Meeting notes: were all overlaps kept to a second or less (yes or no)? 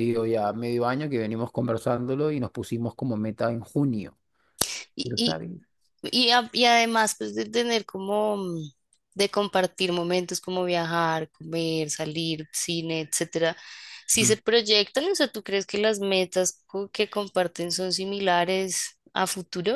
yes